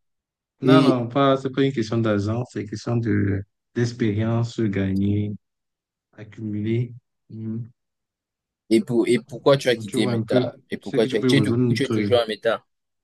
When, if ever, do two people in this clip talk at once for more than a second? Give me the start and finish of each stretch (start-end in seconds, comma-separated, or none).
9.7-12.1